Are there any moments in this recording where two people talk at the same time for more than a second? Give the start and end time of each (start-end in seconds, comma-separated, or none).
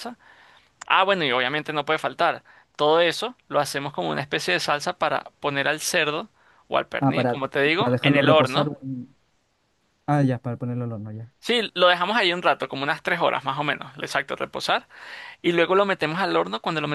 7.0-8.7